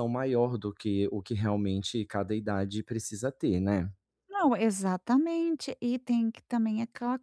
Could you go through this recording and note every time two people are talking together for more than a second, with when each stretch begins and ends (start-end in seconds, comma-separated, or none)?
none